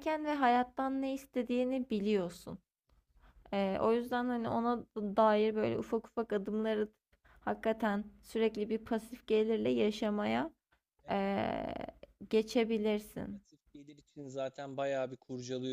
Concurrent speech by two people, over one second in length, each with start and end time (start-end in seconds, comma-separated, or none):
none